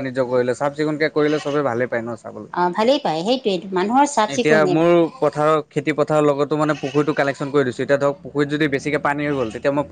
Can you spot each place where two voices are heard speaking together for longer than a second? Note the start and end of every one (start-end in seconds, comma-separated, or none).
none